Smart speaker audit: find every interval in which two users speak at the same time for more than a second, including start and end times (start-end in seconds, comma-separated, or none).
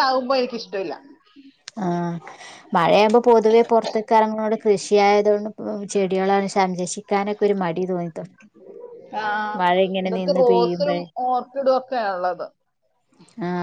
none